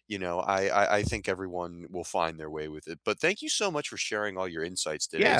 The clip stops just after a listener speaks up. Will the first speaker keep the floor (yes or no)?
no